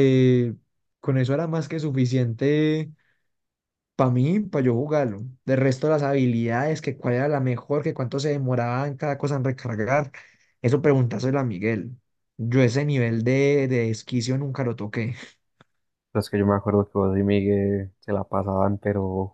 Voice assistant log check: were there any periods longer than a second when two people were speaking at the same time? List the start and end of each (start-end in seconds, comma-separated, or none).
none